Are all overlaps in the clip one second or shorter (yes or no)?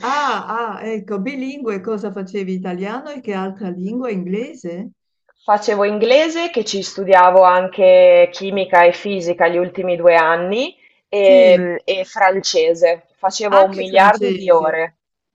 no